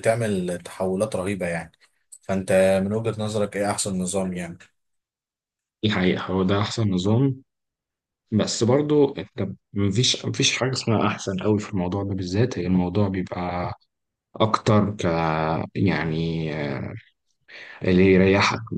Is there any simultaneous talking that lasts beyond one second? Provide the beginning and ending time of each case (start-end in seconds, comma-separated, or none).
none